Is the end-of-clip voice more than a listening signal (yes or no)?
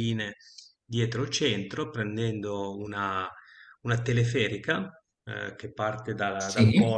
no